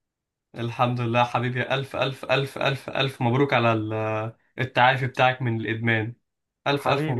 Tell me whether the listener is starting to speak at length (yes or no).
yes